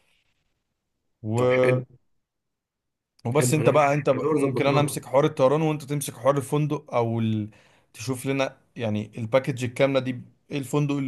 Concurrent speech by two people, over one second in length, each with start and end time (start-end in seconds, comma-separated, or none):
3.3-5.0